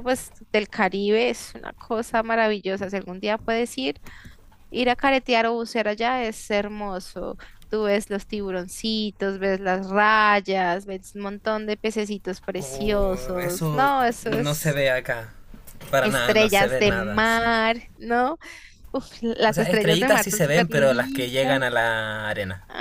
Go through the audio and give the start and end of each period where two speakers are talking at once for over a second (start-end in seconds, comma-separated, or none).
12.6-14.8, 16.0-17.5, 19.5-21.8